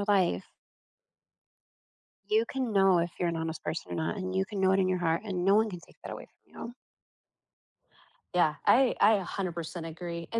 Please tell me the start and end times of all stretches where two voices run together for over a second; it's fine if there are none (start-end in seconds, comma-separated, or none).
none